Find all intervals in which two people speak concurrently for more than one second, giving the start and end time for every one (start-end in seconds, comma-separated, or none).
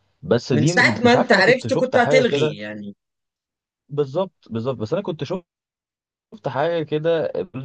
0.5-2.6